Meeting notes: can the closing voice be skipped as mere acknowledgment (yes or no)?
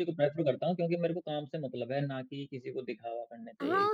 no